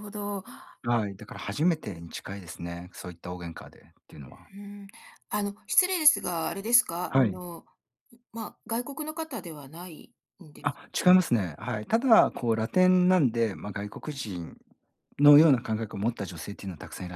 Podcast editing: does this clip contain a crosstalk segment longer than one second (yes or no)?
no